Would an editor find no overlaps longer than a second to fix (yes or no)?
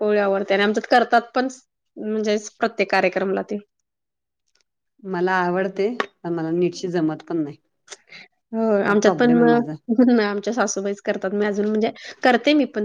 yes